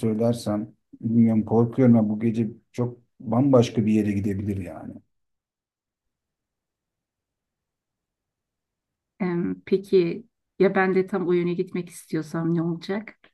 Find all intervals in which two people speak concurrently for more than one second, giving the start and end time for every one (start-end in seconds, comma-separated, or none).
none